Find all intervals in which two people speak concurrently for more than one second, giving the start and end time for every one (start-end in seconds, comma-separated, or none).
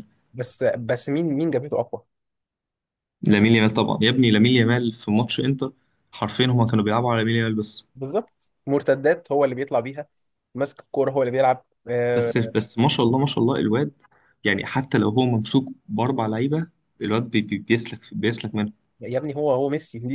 none